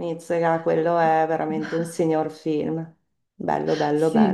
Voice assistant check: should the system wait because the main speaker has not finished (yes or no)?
no